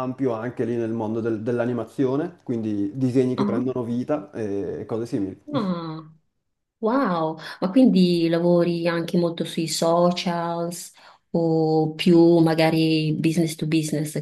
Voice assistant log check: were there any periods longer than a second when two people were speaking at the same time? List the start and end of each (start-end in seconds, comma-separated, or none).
none